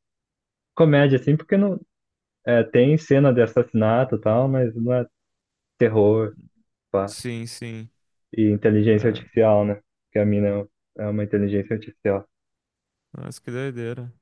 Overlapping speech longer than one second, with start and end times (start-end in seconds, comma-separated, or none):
none